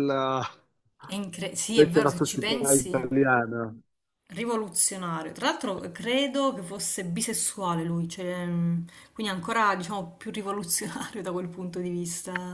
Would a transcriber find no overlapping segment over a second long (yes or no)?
no